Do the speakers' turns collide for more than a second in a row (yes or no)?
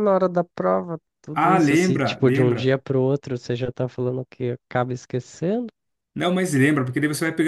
yes